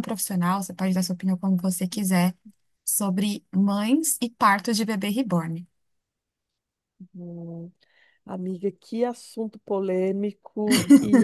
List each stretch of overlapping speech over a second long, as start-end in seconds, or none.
none